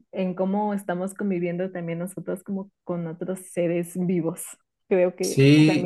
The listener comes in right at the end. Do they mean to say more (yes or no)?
yes